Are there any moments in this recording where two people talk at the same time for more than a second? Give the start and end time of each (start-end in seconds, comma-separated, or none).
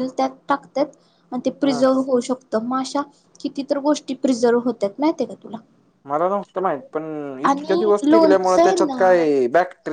7.5-9.2